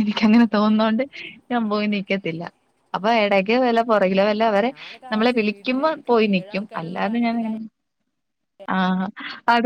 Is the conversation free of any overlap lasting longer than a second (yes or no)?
no